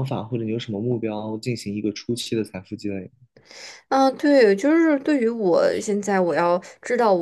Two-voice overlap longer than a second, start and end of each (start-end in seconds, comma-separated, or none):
none